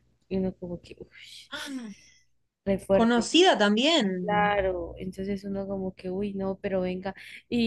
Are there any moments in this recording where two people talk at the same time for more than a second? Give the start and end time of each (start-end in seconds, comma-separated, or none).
none